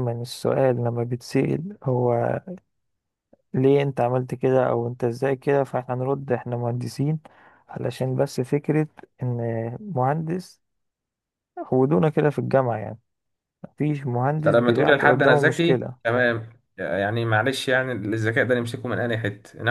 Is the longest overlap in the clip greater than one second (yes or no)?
yes